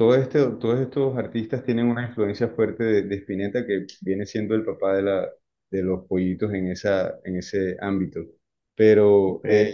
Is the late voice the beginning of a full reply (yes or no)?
no